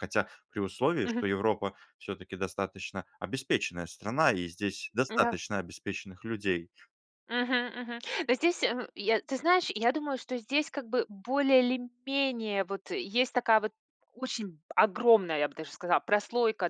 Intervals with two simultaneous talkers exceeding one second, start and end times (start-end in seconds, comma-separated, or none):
none